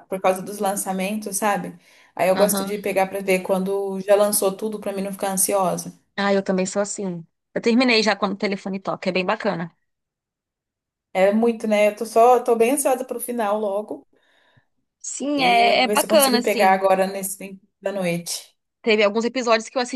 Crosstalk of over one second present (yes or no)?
yes